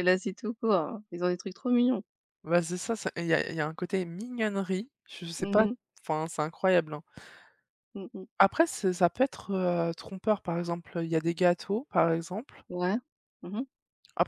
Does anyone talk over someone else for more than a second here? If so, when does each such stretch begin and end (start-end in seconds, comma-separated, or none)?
none